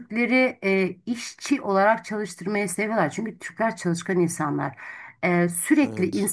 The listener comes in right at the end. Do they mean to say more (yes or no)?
no